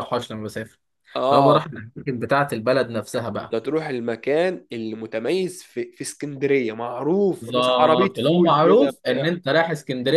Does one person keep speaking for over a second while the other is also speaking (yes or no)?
yes